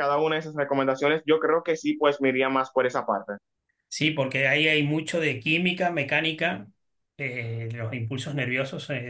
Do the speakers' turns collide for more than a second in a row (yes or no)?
no